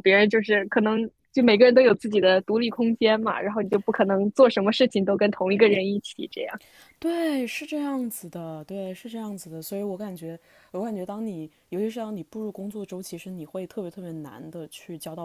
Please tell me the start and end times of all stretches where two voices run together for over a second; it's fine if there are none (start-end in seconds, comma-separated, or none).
none